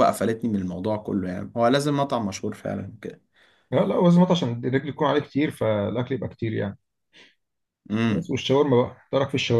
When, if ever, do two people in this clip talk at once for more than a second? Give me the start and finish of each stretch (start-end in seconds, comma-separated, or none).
none